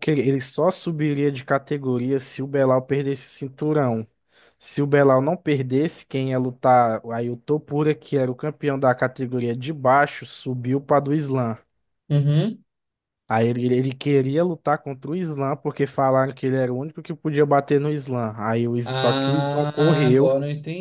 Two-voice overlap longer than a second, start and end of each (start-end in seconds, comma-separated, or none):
18.8-20.3